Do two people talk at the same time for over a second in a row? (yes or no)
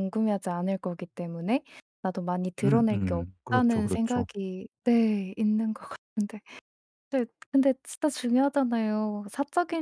yes